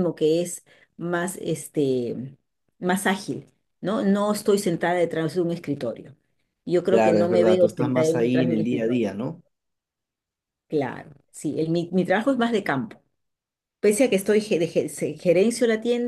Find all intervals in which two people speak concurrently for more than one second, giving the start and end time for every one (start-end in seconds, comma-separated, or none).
6.9-9.0